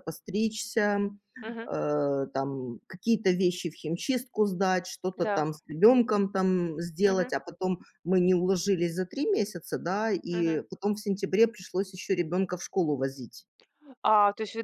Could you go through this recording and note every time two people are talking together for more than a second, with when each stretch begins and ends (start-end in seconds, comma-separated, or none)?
none